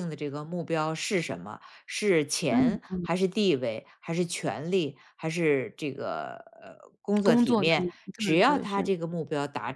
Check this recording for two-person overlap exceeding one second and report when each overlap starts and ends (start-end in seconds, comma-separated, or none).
7.2-8.9